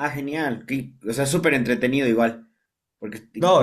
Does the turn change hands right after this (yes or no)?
yes